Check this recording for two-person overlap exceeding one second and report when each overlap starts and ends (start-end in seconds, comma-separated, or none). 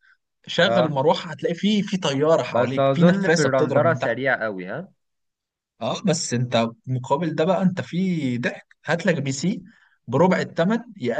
2.5-4.2